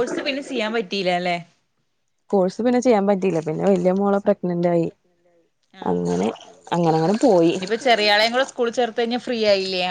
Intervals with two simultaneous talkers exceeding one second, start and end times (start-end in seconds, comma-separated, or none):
2.9-4.9